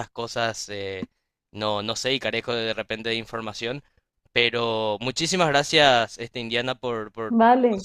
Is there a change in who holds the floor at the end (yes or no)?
yes